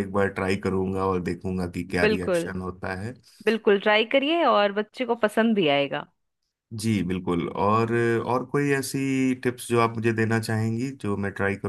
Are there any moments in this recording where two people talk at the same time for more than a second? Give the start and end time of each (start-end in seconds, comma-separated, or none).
none